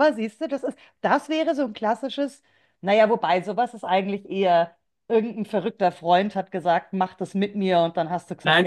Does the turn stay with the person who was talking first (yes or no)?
no